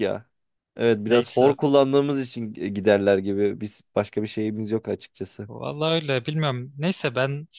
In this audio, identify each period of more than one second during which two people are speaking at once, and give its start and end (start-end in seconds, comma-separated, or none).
none